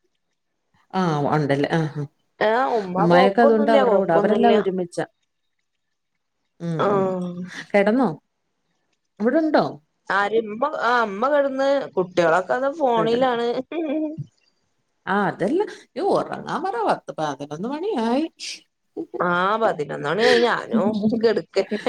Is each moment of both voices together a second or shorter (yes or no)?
no